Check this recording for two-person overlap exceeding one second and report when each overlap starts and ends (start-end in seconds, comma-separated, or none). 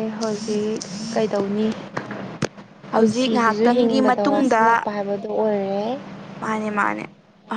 2.9-4.6